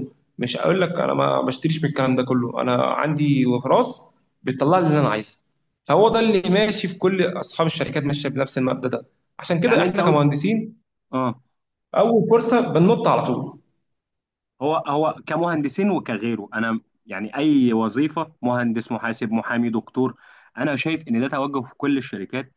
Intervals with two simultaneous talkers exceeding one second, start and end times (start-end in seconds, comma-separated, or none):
none